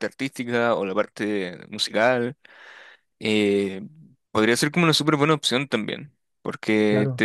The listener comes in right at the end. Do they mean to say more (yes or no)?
no